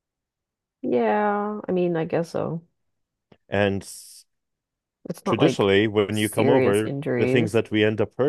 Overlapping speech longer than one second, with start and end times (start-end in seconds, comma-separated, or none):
5.2-7.6